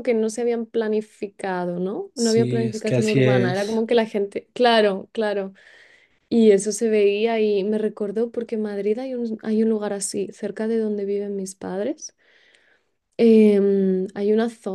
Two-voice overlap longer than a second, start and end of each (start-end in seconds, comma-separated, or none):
2.1-3.8